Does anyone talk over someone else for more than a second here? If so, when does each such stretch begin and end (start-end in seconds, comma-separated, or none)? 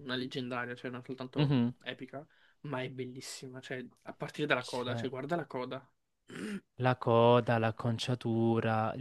none